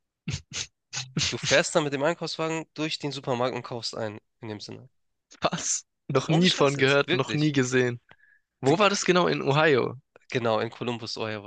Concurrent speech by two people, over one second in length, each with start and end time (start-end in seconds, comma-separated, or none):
6.3-7.6